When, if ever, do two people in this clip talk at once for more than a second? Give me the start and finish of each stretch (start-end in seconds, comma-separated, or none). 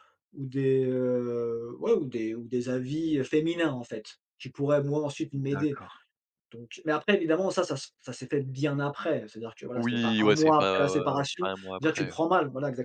9.8-12.2